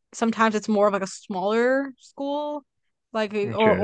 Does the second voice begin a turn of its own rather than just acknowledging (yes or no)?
no